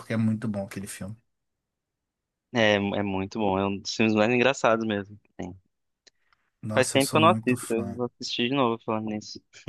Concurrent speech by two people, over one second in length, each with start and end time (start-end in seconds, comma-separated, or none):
6.7-8.0